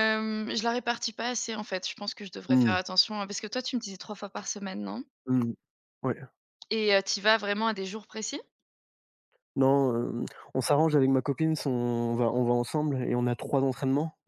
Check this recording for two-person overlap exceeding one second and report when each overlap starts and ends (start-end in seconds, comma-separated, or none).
none